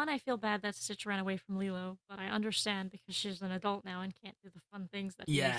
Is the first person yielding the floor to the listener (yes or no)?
yes